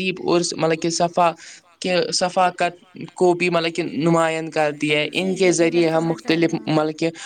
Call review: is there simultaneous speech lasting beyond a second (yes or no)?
yes